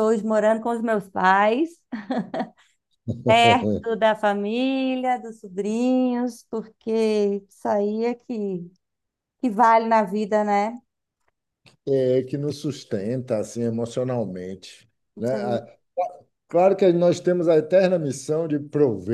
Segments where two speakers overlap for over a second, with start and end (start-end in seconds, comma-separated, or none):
none